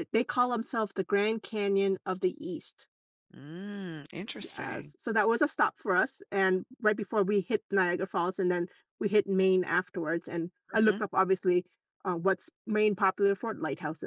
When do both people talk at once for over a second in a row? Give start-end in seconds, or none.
none